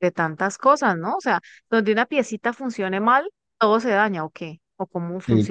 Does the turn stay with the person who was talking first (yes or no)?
no